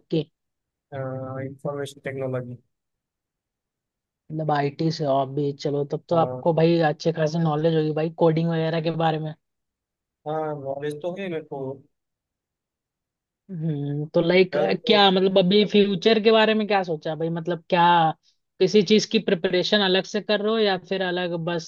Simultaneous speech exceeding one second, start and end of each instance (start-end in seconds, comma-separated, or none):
none